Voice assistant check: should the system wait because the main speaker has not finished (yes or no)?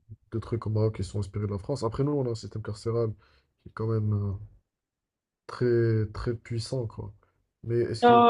no